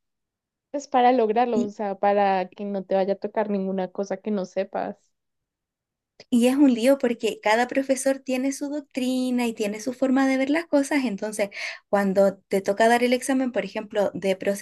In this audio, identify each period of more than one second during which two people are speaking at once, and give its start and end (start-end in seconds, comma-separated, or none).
none